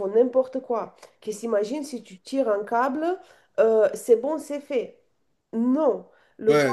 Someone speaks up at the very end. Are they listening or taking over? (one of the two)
listening